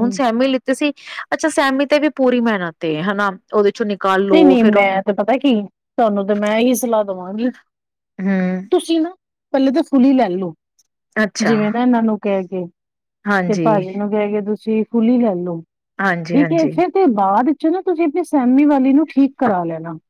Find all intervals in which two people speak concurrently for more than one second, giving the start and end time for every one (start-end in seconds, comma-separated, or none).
none